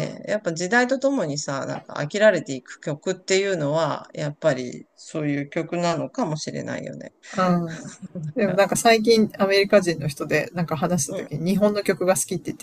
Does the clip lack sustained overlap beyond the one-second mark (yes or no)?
yes